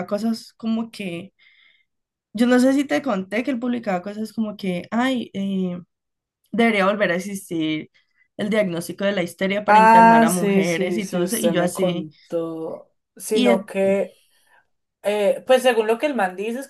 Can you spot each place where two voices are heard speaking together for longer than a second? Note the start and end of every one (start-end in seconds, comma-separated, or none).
9.7-12.1